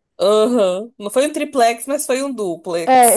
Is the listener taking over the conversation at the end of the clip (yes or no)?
yes